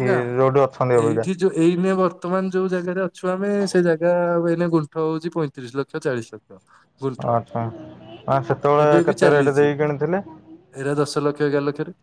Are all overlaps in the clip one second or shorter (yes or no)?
yes